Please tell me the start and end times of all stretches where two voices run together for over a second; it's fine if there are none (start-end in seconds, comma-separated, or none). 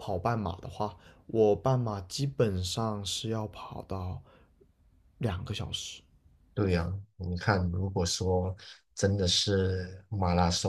none